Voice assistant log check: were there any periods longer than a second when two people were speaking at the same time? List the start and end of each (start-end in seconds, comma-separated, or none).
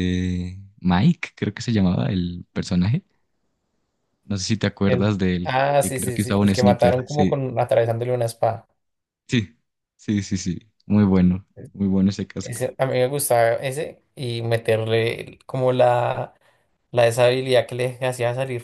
4.8-7.3